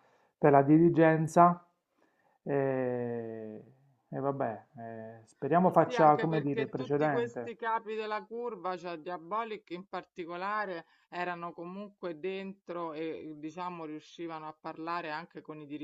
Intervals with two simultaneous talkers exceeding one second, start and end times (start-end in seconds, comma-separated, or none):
5.7-7.5